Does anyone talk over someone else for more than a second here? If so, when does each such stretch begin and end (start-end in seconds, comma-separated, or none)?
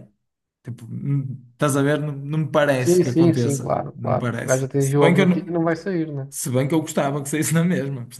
2.8-5.5